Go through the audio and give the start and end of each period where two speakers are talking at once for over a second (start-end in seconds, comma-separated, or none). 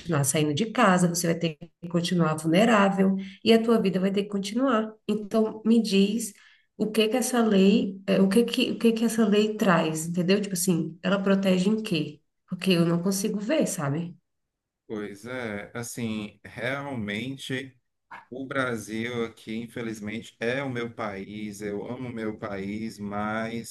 none